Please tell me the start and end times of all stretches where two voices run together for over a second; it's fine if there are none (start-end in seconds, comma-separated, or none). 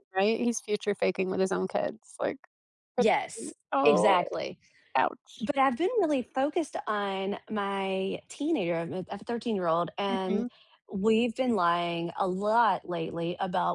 3.0-4.3